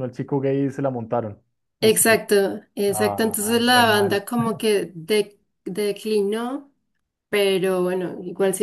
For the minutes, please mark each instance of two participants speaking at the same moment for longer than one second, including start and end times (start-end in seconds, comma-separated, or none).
2.9-4.2